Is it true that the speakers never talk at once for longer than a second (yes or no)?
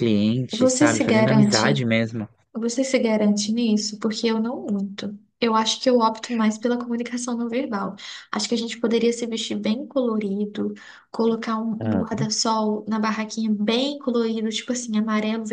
no